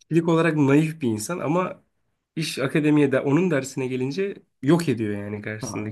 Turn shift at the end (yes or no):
yes